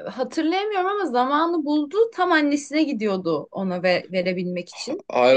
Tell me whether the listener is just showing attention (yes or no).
no